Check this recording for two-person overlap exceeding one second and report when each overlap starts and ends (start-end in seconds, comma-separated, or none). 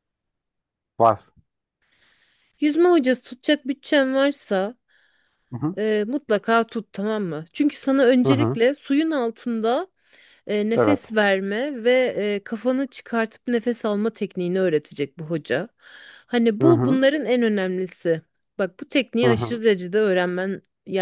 none